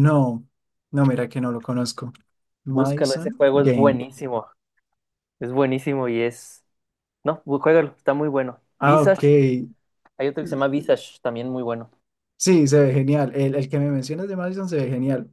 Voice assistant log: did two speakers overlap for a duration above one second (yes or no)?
yes